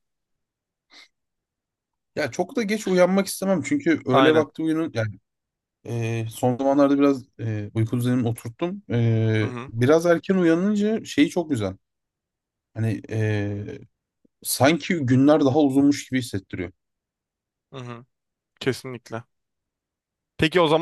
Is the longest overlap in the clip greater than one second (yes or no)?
no